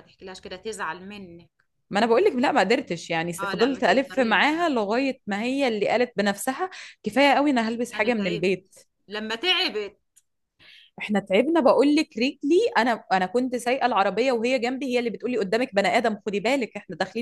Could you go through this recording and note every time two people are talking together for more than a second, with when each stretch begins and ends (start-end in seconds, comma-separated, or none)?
3.4-4.7